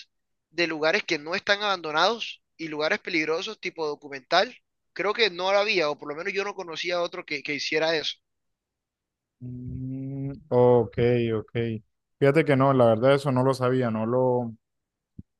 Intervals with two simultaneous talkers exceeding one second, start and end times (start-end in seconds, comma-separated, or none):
none